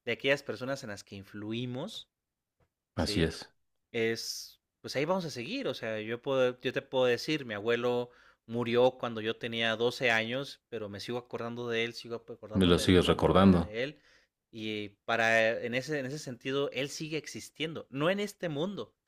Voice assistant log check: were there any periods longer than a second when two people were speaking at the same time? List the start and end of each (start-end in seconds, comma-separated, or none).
12.5-13.8